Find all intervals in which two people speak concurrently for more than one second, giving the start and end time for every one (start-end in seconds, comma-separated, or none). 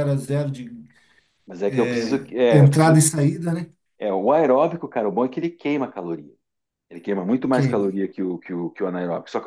1.7-3.1